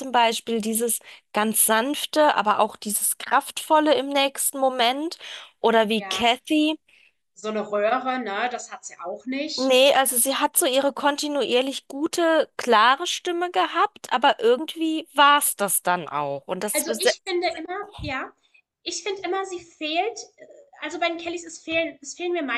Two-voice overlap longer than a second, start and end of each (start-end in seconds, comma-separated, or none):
none